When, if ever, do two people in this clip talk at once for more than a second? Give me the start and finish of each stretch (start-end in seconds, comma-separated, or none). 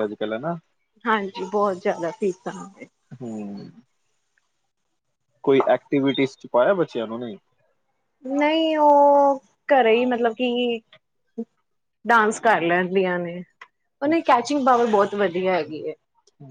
none